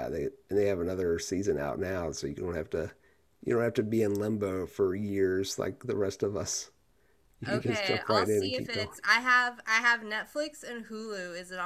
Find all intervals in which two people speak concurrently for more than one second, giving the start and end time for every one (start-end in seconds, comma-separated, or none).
7.5-8.9